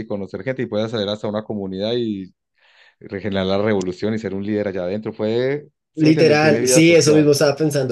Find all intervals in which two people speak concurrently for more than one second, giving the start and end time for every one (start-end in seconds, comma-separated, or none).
6.0-7.3